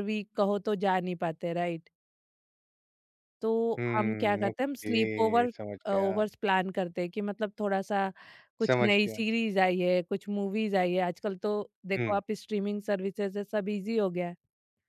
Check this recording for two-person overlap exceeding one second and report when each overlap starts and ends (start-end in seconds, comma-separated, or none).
3.8-6.2